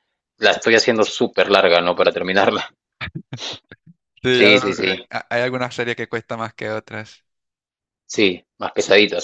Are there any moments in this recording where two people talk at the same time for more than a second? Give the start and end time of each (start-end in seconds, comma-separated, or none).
none